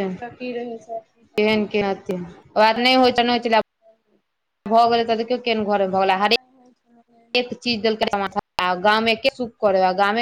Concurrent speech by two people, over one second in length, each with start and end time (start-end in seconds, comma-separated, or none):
6.3-7.5